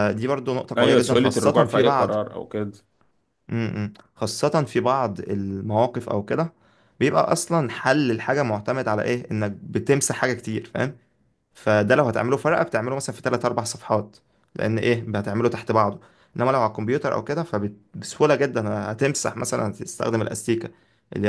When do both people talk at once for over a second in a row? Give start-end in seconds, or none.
0.8-2.2